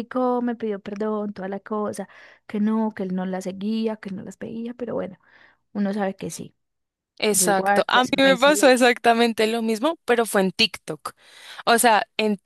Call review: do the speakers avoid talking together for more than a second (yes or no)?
no